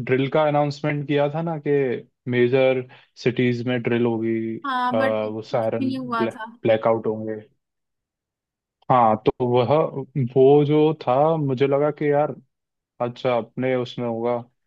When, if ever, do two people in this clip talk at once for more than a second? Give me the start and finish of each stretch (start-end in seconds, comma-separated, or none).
4.9-6.5